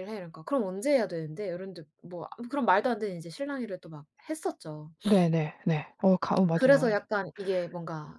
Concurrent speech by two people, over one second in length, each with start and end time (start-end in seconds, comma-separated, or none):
none